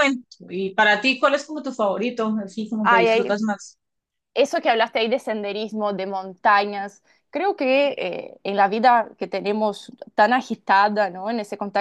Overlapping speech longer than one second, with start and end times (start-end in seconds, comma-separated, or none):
none